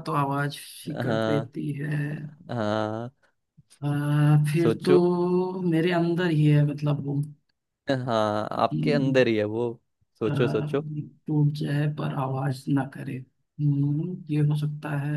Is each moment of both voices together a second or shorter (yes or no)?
yes